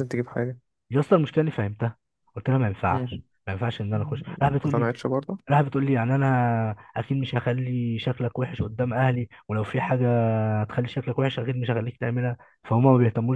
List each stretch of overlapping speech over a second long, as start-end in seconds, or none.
none